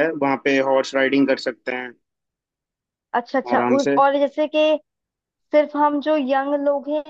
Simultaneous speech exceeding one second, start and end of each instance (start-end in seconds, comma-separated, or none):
none